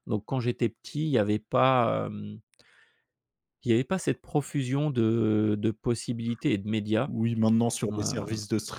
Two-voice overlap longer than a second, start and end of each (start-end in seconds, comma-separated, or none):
none